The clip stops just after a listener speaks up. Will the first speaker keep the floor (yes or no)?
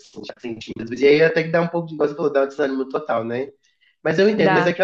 yes